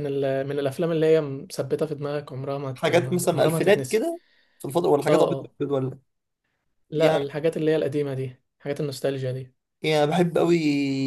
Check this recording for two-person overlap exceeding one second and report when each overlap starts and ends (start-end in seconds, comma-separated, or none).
2.8-4.1